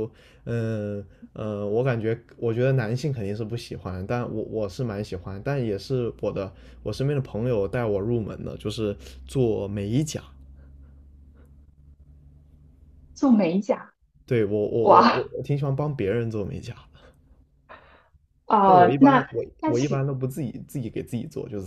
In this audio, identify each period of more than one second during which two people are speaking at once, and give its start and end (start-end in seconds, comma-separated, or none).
18.6-20.1